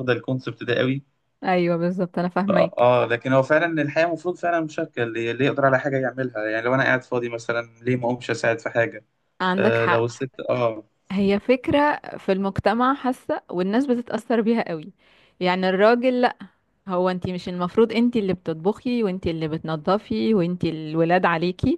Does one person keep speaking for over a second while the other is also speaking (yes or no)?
no